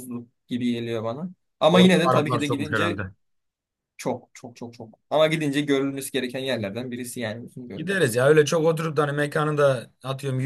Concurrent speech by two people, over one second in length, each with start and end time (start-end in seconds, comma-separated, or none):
1.7-3.0